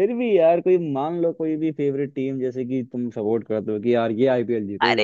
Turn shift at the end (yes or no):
yes